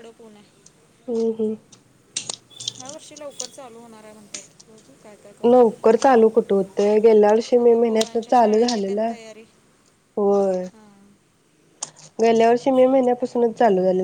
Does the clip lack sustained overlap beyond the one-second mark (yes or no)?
no